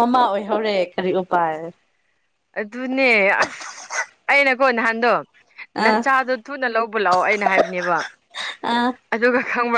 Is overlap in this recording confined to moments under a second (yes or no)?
yes